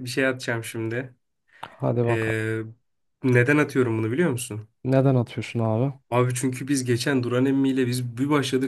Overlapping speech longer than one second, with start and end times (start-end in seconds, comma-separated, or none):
none